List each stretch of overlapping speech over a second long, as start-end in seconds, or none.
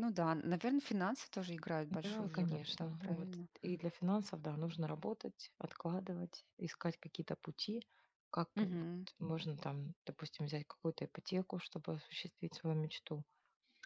2.0-3.5